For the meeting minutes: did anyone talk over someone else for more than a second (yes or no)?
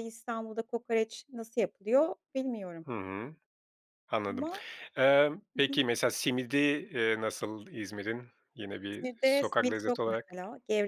yes